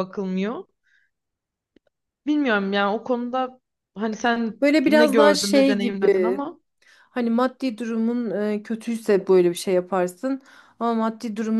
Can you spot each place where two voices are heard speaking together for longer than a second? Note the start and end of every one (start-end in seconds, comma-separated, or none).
4.6-6.5